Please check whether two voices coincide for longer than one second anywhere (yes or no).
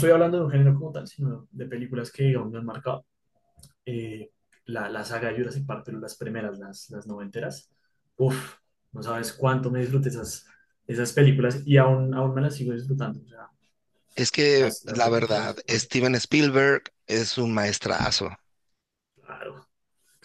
yes